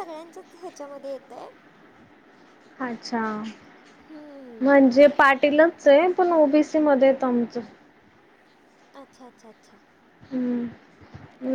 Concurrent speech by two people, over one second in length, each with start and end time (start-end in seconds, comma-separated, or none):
none